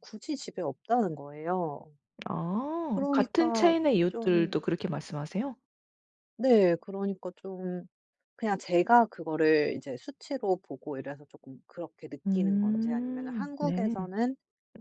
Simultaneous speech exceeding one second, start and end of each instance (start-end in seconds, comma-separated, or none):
2.9-4.7, 12.3-13.9